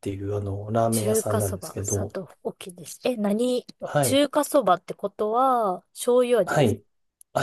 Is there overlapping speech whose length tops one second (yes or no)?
yes